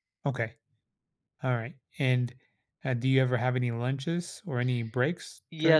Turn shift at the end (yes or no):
yes